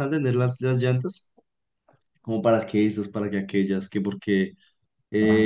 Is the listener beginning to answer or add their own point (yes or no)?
no